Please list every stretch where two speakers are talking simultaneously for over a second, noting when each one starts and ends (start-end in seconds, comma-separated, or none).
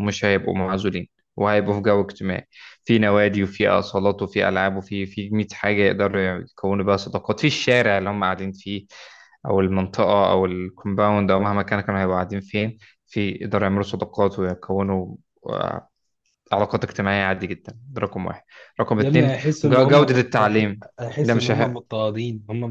19.0-21.5